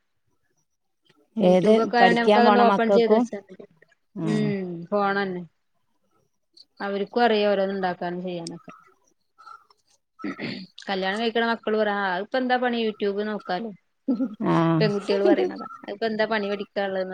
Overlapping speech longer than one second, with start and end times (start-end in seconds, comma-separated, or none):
1.6-3.2